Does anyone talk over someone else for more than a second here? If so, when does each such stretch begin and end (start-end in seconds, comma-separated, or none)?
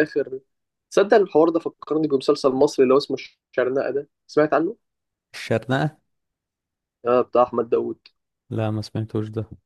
none